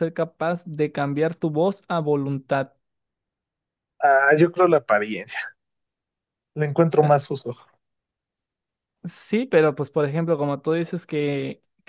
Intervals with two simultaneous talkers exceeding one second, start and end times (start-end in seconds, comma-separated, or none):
none